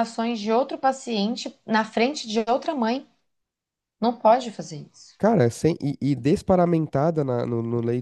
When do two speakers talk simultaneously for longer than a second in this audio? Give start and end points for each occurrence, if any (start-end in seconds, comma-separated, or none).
none